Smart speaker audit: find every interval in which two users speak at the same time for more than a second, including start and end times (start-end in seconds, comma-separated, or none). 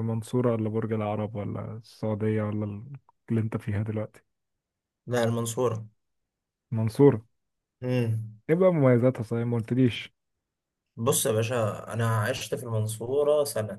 none